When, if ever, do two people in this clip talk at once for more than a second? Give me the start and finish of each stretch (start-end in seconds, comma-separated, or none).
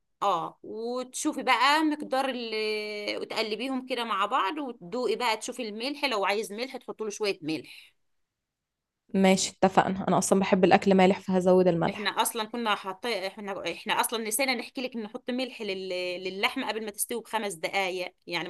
none